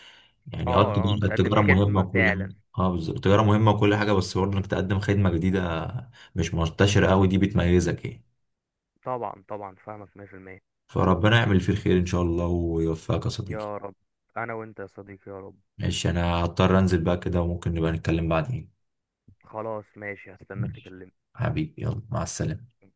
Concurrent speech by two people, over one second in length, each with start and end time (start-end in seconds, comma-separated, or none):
0.7-2.5